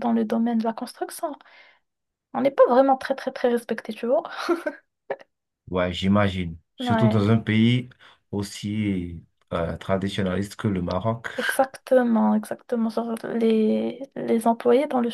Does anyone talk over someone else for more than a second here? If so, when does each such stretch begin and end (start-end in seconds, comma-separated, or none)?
none